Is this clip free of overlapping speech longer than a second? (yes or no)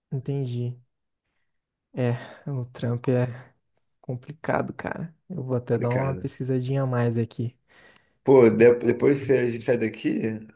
yes